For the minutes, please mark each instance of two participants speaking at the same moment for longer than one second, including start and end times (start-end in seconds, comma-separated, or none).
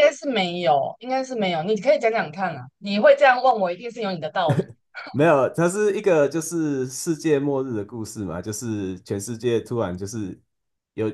none